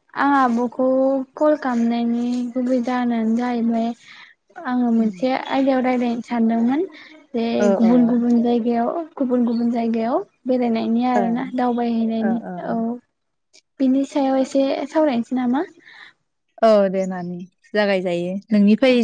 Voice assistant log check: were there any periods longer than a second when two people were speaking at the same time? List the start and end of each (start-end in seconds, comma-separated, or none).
none